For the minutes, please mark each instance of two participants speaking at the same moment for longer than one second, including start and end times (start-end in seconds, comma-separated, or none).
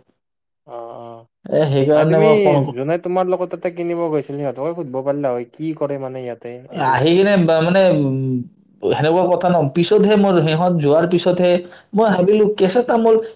none